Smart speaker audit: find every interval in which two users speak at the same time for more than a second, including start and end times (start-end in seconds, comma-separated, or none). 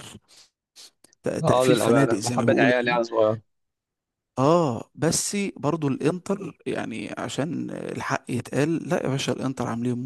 1.4-3.0